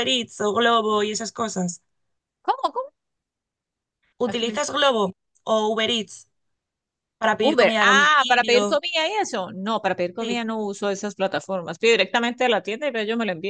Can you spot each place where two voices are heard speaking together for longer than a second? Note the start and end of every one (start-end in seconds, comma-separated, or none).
7.4-8.6